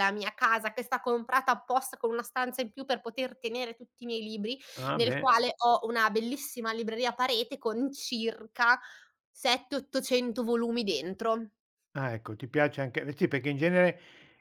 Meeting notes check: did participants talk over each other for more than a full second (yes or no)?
no